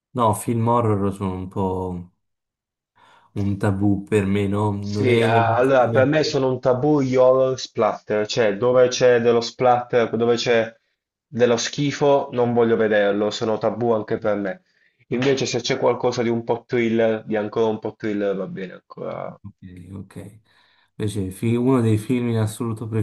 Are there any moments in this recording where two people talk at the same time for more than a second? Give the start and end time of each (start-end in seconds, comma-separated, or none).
4.8-6.1